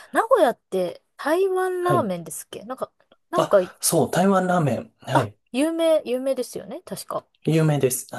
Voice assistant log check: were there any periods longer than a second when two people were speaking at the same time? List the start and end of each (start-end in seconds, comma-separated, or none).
none